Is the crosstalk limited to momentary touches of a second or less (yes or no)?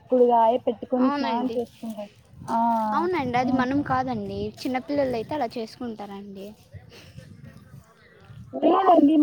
yes